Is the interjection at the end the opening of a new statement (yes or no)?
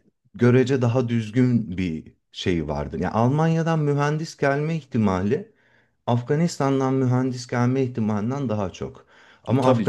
no